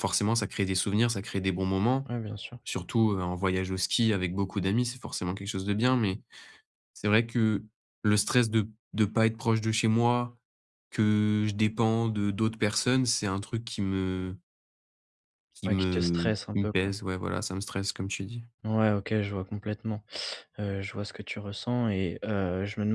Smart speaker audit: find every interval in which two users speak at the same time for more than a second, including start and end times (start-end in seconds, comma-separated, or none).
15.6-16.9